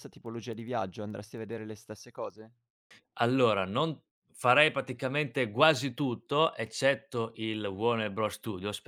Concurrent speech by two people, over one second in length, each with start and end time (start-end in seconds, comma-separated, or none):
none